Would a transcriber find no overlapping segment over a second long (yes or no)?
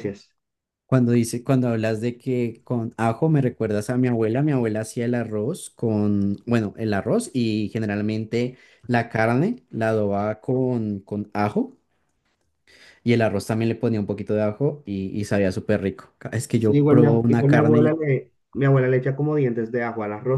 no